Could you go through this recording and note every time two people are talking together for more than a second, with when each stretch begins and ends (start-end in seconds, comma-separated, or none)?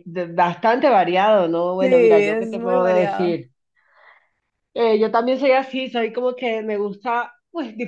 1.8-3.4